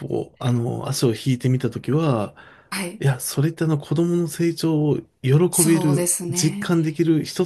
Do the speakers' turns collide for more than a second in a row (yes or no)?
yes